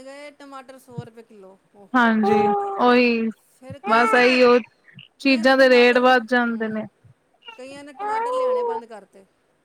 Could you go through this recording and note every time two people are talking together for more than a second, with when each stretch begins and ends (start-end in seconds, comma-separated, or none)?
5.2-6.8